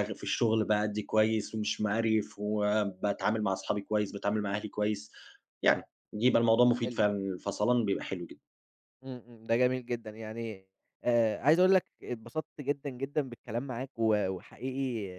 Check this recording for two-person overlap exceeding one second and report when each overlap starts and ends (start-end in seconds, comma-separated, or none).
none